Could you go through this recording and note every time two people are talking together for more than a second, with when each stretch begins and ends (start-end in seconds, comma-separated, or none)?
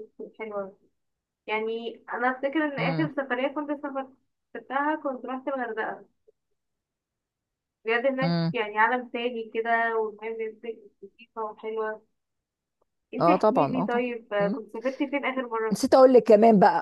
13.2-14.6